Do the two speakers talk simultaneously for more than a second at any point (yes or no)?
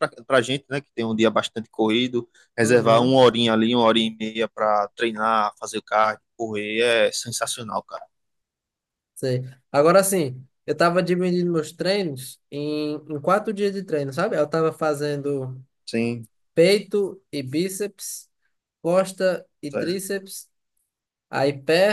no